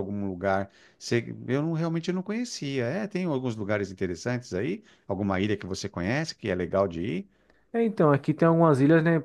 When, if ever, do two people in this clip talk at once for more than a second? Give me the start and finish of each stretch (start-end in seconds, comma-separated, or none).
none